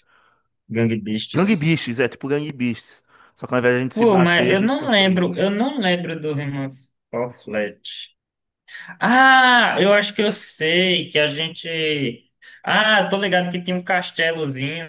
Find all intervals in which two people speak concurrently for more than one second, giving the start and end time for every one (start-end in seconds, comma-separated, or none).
3.9-5.2